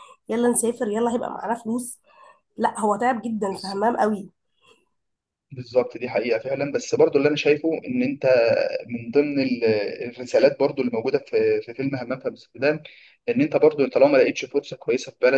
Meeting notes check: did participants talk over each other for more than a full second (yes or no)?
no